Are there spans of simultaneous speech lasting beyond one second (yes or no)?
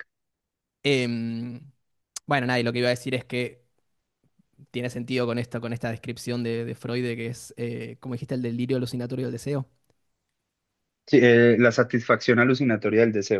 no